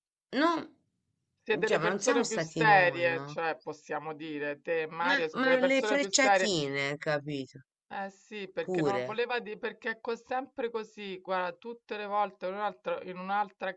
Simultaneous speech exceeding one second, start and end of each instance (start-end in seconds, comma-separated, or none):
1.6-3.4, 5.0-6.5